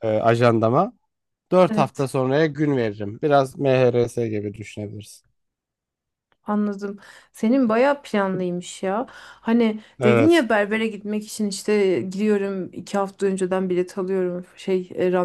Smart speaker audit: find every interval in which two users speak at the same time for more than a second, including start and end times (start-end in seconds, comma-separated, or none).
none